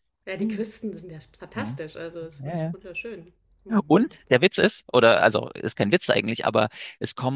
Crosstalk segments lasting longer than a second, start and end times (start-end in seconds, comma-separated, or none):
none